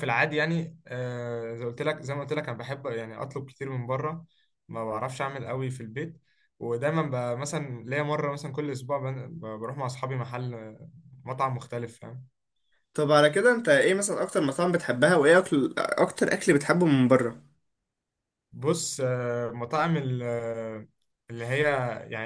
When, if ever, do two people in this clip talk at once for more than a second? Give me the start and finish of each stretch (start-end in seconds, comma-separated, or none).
none